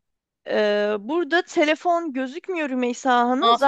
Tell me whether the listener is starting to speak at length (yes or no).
no